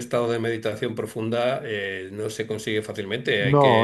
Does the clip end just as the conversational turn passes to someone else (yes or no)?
no